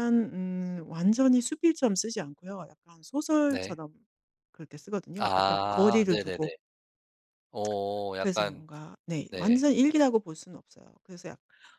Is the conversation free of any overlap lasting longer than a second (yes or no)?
no